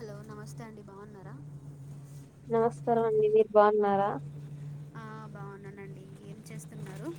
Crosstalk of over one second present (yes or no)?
no